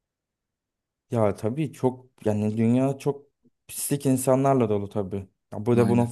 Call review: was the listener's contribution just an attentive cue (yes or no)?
yes